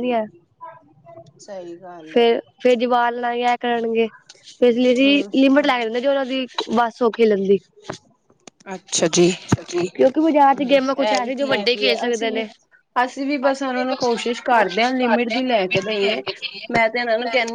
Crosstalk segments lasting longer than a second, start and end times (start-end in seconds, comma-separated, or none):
10.2-12.4